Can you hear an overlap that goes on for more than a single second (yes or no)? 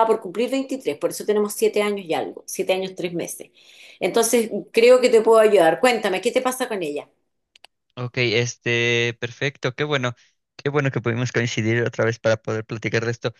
no